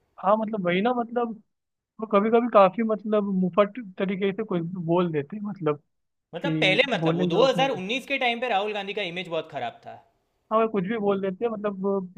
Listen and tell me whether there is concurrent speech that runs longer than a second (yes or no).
yes